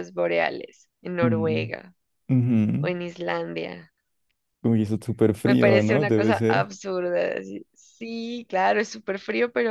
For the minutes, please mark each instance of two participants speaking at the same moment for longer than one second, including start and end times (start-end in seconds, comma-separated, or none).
5.4-6.7